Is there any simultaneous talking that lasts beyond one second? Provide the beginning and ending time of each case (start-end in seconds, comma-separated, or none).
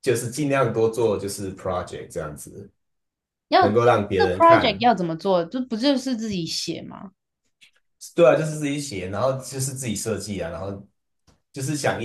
3.6-4.8